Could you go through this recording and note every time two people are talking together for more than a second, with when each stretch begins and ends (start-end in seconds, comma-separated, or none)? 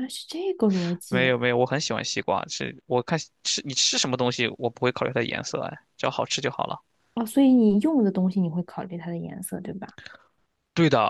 none